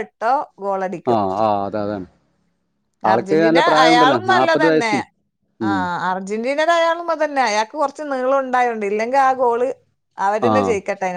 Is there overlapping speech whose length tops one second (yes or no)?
yes